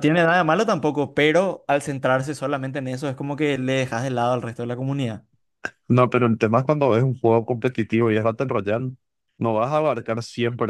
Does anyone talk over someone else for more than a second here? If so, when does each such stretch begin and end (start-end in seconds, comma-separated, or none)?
none